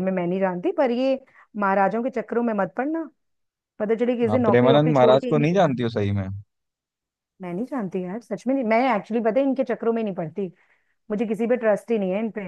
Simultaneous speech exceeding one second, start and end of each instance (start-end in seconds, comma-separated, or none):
4.3-5.7